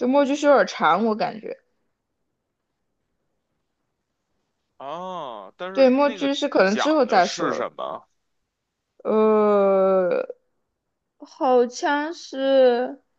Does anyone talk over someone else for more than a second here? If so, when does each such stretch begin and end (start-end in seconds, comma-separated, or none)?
5.7-7.7